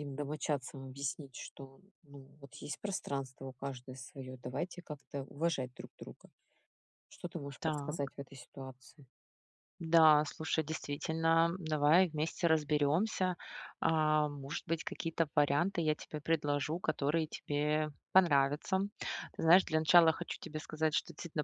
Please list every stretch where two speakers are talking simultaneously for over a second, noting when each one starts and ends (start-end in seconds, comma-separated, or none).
none